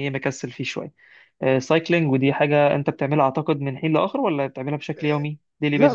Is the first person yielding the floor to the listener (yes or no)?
yes